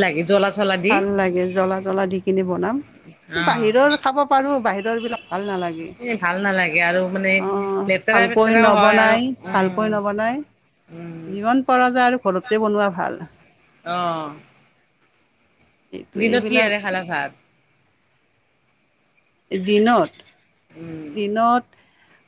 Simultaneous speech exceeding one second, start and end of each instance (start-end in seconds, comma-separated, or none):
8.2-9.9